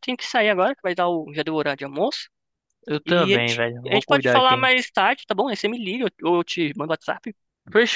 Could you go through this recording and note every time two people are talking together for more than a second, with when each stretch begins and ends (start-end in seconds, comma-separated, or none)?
3.0-4.7